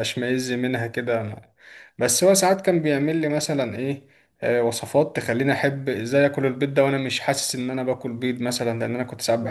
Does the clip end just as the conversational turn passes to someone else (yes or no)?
yes